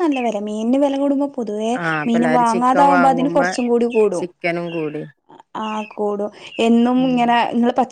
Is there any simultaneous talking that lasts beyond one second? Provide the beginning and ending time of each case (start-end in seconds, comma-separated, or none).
2.1-3.5